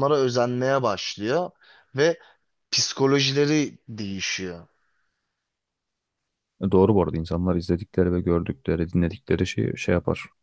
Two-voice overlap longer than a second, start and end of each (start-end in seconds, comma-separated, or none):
none